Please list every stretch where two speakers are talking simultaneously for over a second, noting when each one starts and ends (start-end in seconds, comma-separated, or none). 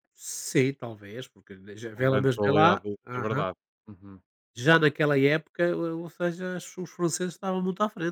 1.9-3.4